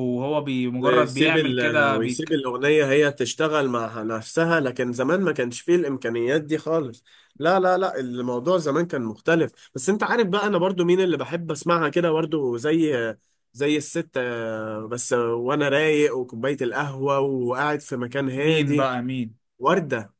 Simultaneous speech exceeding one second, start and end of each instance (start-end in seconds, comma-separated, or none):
0.8-2.4